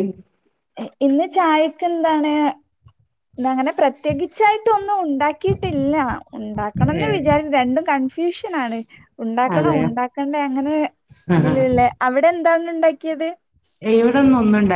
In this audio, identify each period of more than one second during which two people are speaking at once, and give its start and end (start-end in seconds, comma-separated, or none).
none